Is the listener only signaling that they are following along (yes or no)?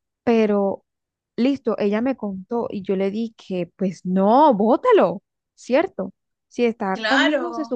yes